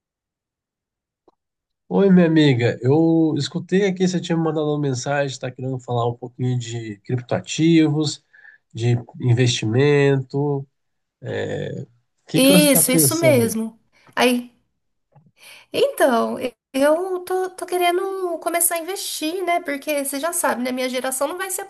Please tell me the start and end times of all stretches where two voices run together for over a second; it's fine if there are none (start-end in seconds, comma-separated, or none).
12.3-13.6